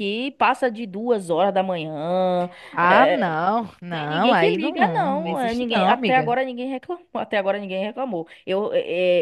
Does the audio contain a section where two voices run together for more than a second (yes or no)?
yes